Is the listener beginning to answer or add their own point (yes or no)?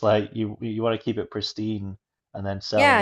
yes